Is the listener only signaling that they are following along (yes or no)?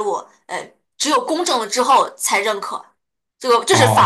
no